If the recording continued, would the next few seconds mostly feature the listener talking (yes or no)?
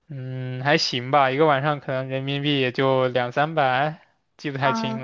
yes